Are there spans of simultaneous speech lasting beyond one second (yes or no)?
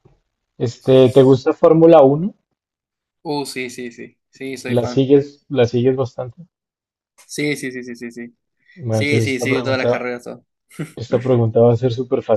yes